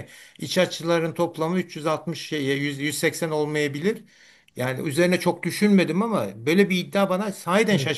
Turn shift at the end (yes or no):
no